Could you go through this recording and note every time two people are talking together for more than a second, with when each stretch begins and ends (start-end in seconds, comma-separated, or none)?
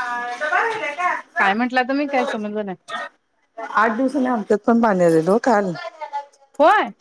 none